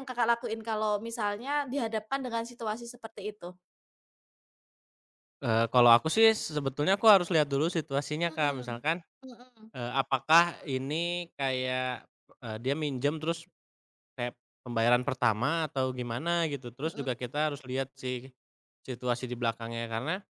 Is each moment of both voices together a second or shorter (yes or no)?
yes